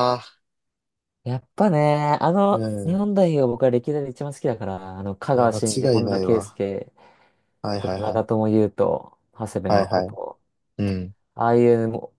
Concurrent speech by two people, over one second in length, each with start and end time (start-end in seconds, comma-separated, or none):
5.3-6.6